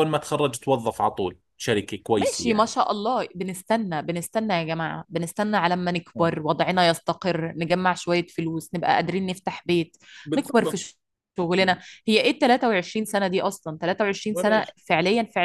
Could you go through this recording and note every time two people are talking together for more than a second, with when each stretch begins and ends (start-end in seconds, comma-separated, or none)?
none